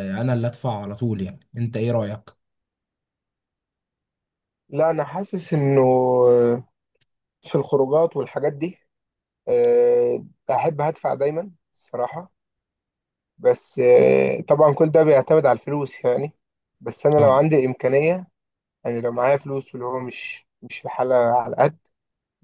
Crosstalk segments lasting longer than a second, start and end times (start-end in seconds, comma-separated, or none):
none